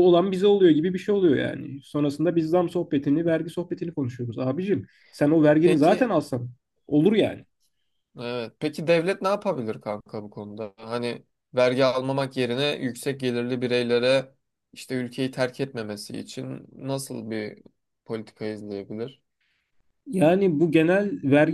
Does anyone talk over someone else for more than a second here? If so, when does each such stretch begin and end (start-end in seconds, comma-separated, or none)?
none